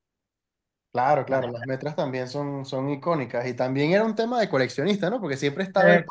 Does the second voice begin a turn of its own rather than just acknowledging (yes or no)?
no